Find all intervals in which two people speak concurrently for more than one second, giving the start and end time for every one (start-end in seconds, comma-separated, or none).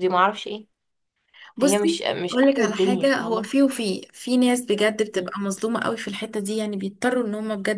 1.6-3.5